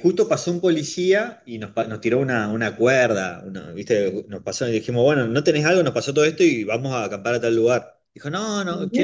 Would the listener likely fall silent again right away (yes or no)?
yes